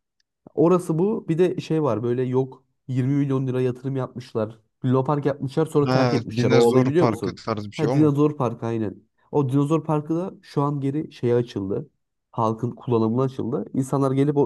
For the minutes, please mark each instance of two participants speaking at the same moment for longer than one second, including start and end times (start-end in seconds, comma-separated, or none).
5.8-8.1